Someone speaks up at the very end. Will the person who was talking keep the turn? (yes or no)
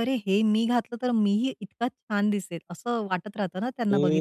no